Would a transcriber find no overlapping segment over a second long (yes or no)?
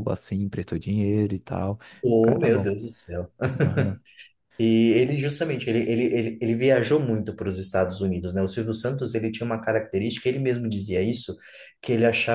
yes